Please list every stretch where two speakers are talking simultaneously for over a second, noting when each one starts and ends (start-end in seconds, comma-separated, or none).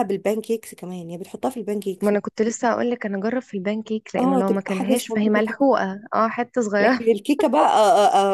4.2-5.6